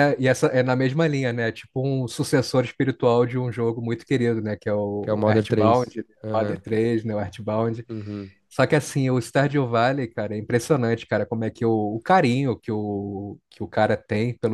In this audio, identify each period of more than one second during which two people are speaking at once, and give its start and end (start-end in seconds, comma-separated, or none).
5.0-6.6